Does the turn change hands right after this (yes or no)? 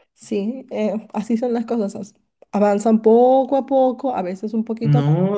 yes